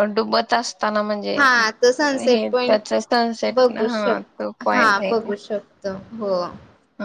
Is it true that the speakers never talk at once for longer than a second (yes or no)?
no